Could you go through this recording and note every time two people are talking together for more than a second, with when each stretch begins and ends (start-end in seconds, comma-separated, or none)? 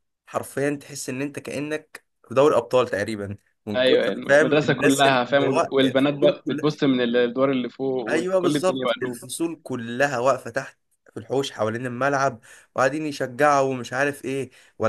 3.8-6.7, 8.1-9.3